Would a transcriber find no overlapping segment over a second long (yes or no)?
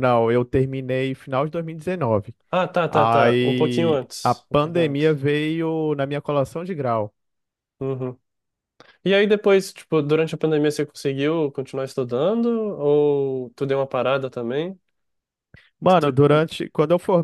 no